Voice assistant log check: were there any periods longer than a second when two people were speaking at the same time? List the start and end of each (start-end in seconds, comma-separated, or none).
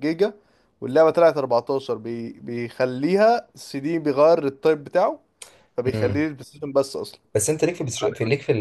none